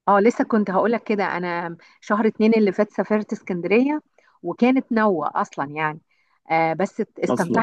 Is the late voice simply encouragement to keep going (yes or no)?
yes